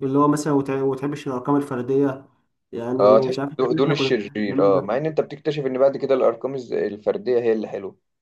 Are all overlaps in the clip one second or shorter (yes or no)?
no